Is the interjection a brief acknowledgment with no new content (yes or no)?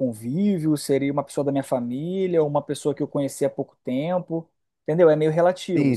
no